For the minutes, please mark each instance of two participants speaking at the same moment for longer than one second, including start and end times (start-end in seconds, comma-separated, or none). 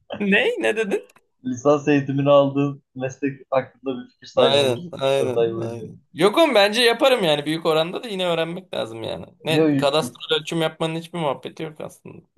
4.4-5.8